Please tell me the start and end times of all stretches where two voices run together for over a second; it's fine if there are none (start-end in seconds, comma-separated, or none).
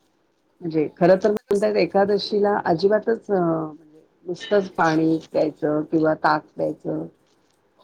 0.6-2.2